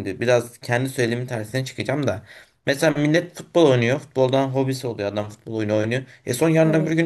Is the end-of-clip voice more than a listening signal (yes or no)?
no